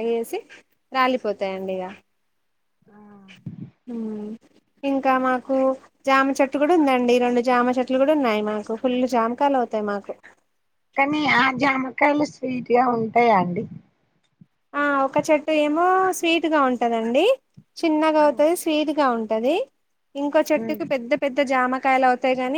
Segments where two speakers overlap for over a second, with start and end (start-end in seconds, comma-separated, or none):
none